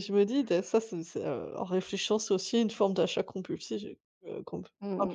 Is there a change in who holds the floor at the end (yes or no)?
yes